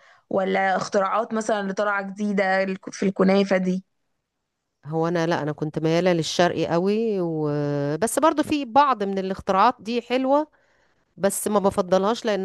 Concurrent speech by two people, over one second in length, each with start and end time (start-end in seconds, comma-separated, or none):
none